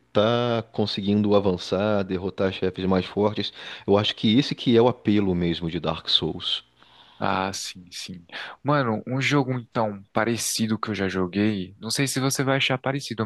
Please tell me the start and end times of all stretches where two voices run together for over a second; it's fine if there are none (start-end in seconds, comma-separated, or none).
none